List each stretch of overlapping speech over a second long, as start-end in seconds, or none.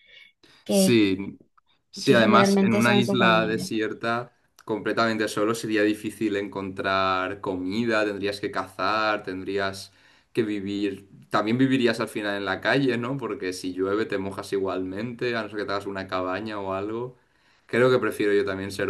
2.0-3.7